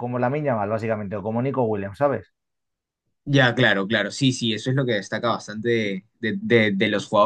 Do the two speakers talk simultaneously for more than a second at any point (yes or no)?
no